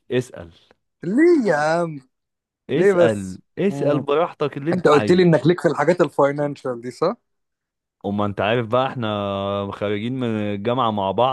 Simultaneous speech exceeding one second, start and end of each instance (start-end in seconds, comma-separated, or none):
2.7-4.0